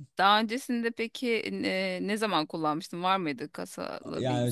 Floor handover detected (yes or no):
yes